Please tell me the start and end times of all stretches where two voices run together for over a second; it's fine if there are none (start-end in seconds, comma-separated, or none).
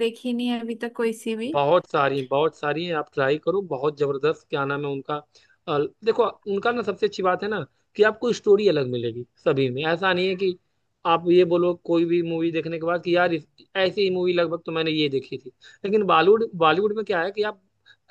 none